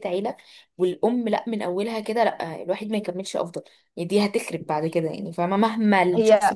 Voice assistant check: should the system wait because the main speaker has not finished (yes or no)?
yes